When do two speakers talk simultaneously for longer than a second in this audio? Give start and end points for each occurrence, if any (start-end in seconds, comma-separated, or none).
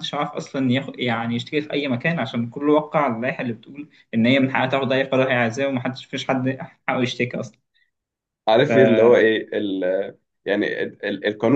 none